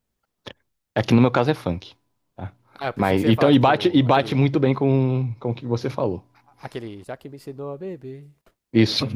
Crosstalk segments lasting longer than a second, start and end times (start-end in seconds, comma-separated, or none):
3.0-4.4